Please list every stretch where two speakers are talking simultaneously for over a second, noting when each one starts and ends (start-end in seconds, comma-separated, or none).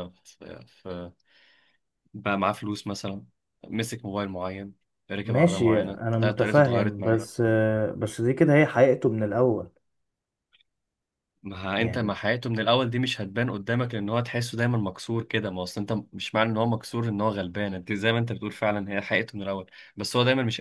5.2-7.2